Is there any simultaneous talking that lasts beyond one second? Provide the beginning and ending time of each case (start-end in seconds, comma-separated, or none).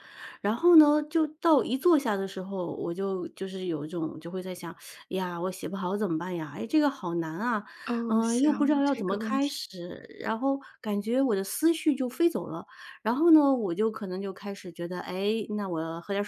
8.1-9.5